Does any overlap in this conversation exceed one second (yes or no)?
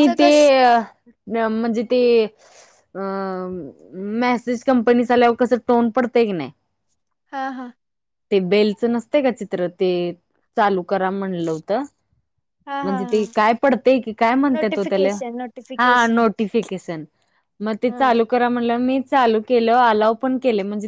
no